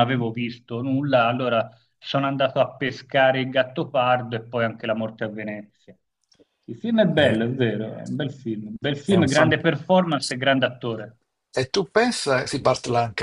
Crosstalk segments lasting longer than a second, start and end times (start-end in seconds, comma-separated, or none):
none